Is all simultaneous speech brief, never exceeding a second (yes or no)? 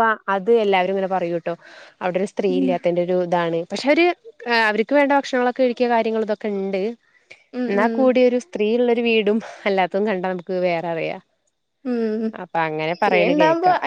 yes